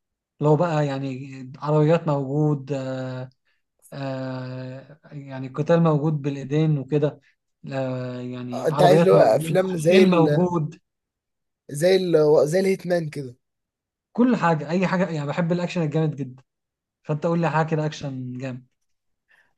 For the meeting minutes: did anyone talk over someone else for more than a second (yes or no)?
yes